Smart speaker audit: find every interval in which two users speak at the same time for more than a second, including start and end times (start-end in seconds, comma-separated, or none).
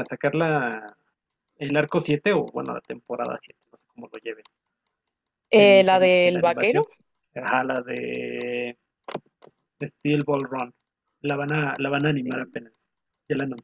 5.5-6.8